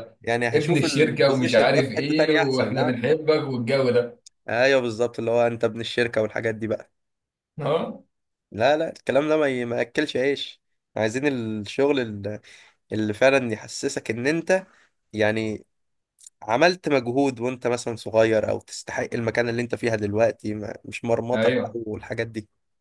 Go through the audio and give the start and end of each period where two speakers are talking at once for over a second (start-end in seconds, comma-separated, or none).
0.5-2.9